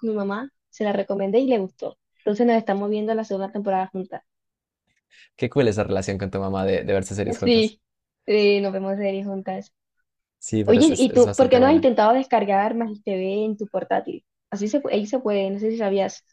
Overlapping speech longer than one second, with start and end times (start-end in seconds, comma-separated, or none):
10.6-11.9